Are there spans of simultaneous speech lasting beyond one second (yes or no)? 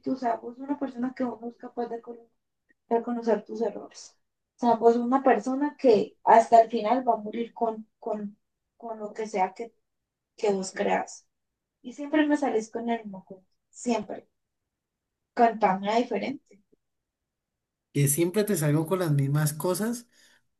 no